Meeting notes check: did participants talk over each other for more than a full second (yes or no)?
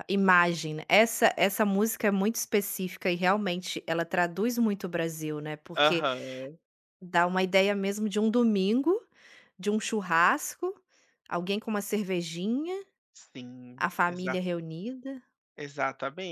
no